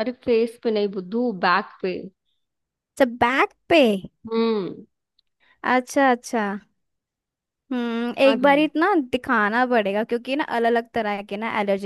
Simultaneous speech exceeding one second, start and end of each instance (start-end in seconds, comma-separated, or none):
none